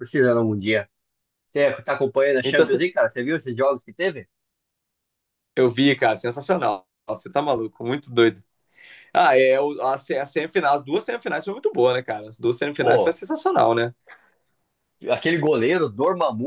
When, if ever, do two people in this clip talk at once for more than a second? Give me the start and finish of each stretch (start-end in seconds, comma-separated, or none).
none